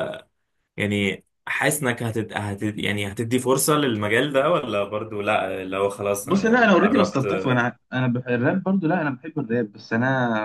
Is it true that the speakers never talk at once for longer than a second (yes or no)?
no